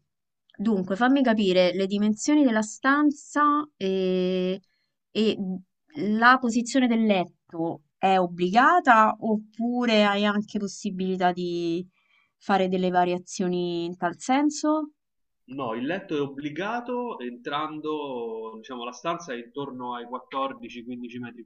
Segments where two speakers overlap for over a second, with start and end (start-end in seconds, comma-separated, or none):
none